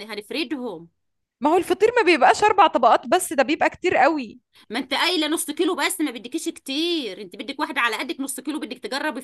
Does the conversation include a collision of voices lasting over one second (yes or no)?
no